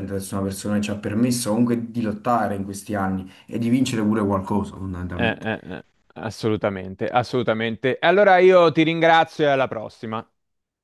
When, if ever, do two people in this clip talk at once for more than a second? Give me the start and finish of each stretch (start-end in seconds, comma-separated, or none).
none